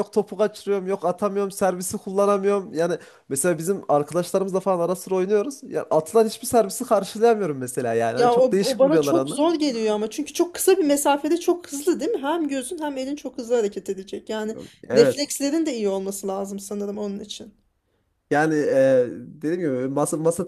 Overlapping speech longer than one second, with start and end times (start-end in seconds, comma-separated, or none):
8.2-9.4